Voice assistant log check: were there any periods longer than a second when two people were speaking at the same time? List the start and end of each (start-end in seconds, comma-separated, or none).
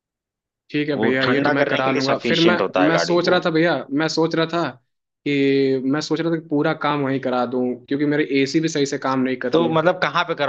0.9-3.4